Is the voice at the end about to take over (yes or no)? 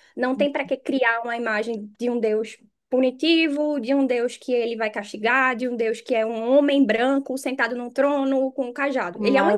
yes